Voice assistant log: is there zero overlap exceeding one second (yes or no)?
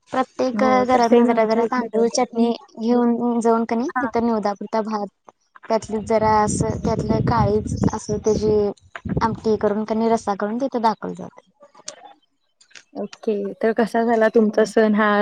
no